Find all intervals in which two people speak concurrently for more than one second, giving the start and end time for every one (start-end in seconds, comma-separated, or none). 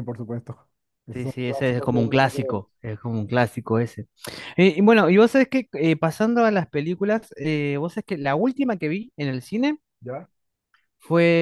1.1-2.5